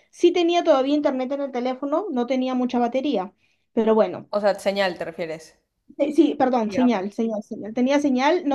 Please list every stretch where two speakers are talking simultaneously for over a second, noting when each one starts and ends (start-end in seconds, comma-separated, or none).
none